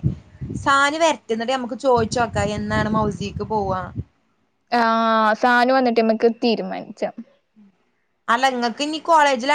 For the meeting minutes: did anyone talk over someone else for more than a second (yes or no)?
no